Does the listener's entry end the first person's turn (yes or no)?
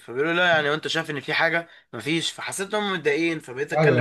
no